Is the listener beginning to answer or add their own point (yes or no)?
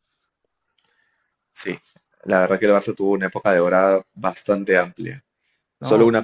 no